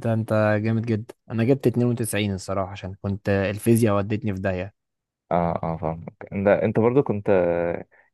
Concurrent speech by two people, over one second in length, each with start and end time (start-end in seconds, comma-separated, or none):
none